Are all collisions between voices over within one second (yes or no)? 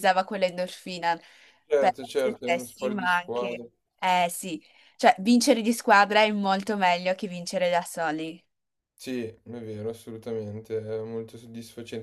no